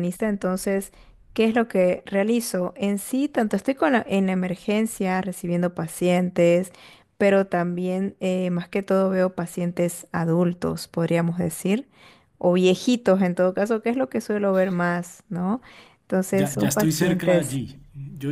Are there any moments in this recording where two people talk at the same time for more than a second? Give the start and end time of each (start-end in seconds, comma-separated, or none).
16.3-17.6